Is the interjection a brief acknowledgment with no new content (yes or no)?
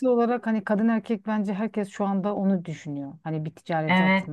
no